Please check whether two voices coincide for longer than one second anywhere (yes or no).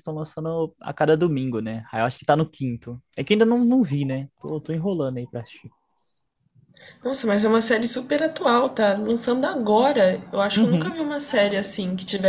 no